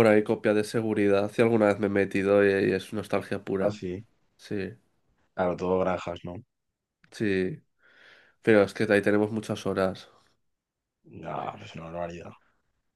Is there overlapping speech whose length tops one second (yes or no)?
no